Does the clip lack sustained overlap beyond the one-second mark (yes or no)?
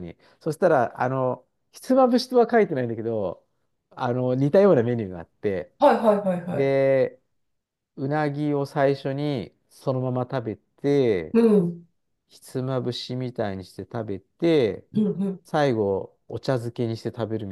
yes